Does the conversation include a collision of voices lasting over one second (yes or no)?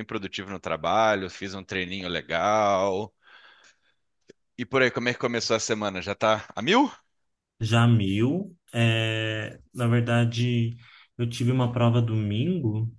no